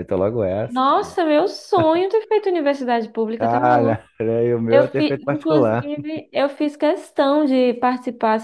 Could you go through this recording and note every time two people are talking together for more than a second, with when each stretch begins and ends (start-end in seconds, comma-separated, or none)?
4.7-5.9